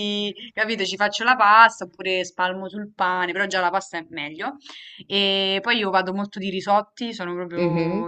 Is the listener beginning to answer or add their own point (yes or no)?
no